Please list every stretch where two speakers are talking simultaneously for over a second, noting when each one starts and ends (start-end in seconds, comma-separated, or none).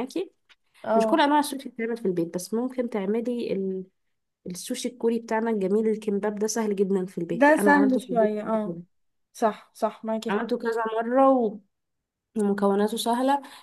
7.3-8.8